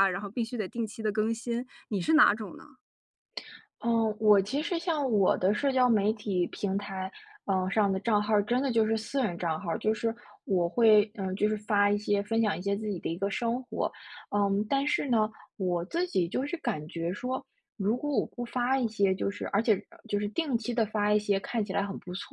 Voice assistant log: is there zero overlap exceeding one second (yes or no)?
yes